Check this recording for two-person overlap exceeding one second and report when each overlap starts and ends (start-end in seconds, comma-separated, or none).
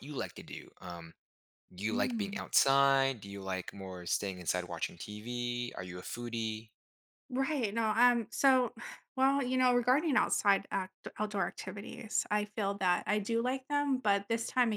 none